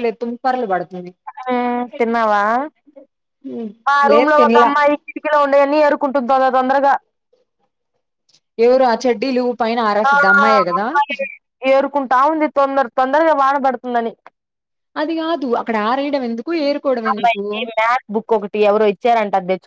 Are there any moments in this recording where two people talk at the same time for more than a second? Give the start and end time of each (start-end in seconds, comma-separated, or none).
none